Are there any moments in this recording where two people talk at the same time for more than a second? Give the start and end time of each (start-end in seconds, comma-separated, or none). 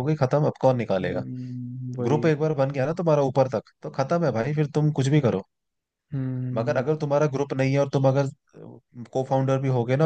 none